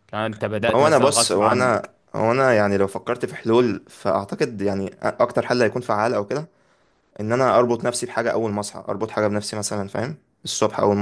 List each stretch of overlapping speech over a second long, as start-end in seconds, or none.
0.6-1.9